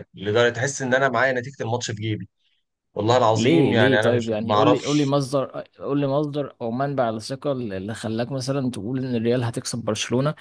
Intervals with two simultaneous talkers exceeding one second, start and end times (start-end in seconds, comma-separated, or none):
3.3-5.2